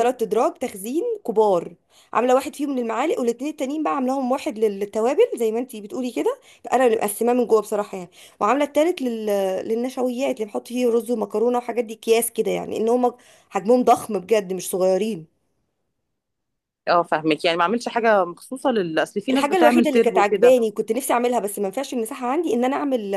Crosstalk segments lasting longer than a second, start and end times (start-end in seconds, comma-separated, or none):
19.3-20.6